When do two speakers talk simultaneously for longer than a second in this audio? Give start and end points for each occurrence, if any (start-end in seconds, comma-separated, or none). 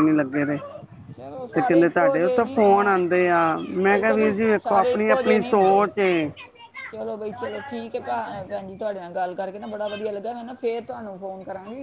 3.9-5.9